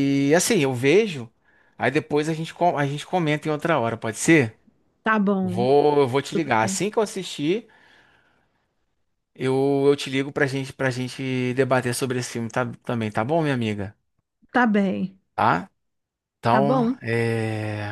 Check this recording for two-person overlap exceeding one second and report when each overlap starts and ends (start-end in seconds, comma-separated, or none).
none